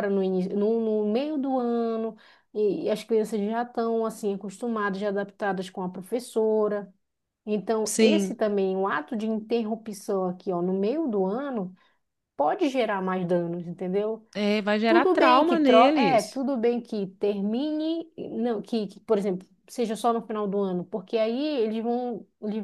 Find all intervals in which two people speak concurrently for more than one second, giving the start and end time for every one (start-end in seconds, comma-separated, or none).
14.9-16.4